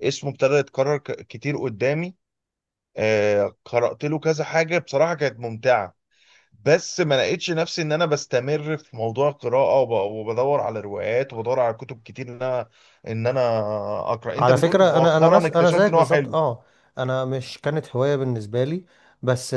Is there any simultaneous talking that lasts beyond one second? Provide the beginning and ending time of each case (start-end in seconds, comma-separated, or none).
14.4-16.4